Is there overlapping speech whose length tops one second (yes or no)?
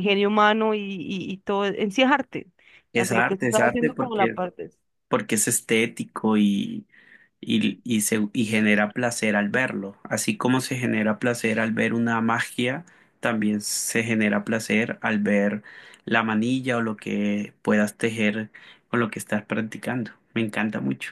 yes